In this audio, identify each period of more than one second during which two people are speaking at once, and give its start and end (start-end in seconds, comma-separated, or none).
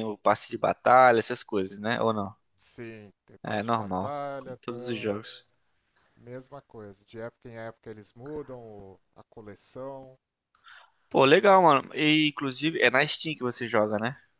3.4-5.1